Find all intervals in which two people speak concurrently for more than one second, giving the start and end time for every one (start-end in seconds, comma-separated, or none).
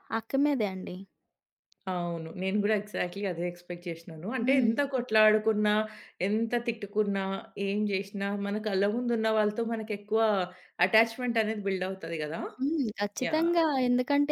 none